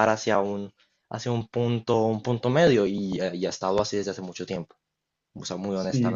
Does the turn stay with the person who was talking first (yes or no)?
no